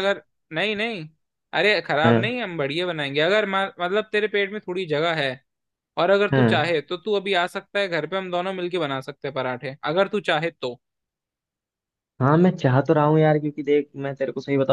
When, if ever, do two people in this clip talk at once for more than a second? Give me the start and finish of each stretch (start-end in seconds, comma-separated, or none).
none